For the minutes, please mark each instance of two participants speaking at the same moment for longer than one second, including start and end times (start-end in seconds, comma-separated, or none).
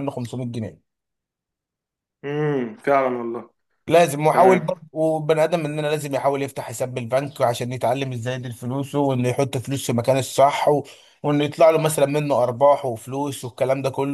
none